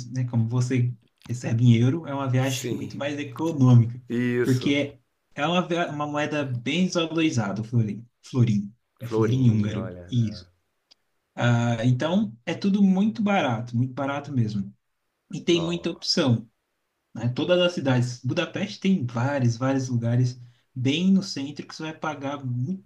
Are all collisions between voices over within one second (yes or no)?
no